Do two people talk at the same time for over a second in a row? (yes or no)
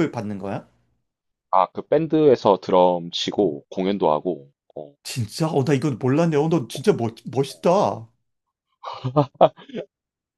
no